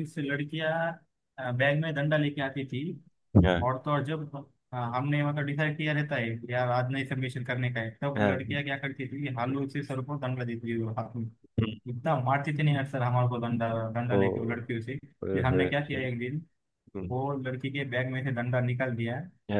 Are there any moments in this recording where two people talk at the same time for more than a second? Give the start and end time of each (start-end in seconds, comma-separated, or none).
none